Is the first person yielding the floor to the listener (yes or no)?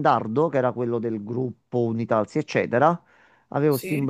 no